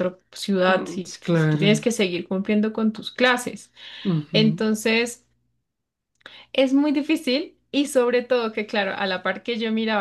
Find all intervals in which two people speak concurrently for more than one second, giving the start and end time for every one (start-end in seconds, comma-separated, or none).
0.7-1.9